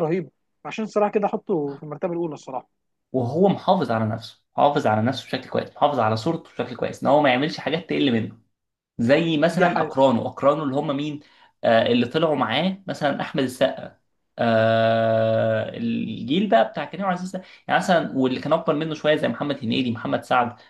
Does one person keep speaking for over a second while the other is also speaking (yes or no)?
no